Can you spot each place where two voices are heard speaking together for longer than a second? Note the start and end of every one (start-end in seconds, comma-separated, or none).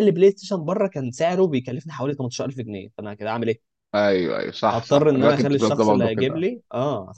4.7-6.5